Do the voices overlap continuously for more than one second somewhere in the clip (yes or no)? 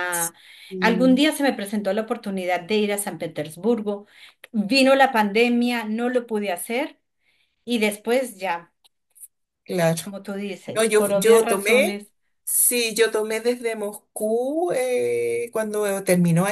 yes